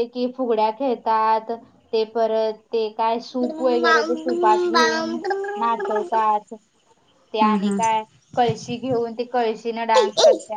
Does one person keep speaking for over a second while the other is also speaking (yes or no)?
yes